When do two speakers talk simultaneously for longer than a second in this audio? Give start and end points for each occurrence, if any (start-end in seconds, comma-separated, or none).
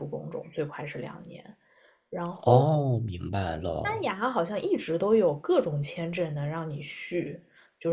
2.4-4.1